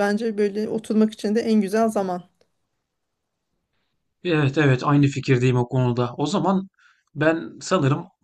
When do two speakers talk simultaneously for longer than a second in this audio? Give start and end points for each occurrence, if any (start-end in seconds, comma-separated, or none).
none